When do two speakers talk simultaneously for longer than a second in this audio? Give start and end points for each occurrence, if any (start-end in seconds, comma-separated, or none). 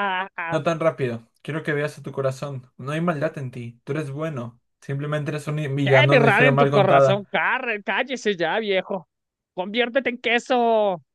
5.8-7.3